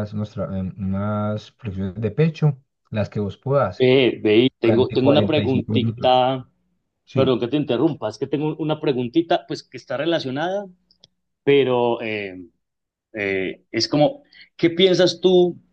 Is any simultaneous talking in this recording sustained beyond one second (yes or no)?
yes